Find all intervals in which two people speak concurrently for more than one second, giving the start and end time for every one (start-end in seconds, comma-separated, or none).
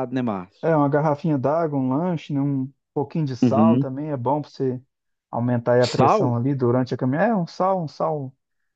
none